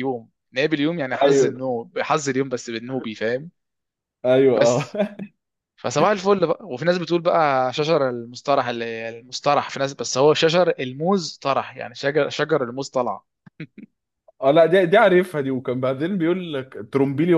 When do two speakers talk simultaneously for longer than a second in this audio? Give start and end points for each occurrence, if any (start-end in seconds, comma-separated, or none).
none